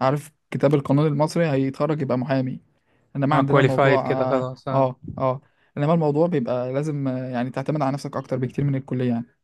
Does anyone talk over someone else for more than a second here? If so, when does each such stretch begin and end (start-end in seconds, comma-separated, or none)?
3.3-4.9